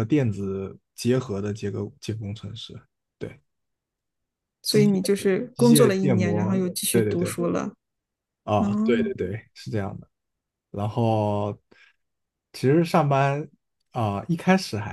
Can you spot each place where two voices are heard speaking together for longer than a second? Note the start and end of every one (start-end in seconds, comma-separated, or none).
5.5-7.4